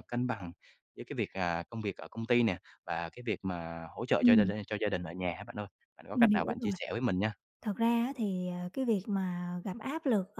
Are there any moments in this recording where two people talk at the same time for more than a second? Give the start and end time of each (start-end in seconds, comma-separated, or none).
none